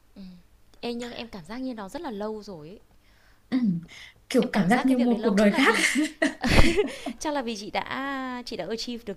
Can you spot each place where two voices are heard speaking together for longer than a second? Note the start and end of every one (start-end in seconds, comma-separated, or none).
4.4-5.7